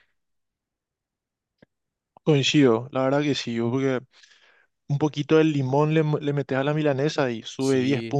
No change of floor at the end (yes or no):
no